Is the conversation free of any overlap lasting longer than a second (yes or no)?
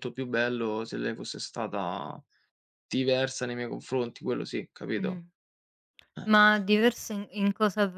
yes